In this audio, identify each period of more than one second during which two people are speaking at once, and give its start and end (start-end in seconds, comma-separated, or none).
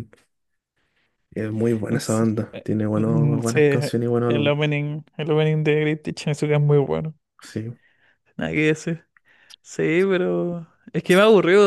1.9-3.6